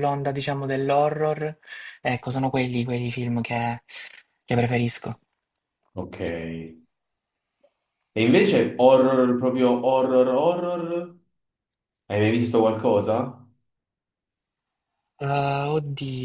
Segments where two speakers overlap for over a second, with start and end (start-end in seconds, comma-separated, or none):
none